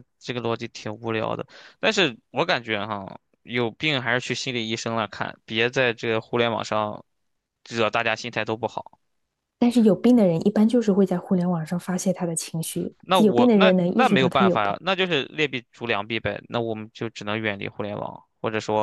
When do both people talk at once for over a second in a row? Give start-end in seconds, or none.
13.0-14.8